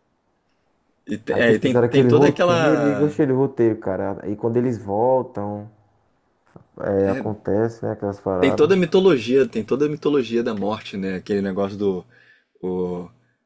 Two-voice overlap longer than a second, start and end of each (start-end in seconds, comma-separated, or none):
1.3-3.2